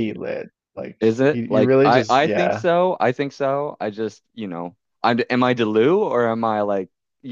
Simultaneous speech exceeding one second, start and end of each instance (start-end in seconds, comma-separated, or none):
1.0-2.6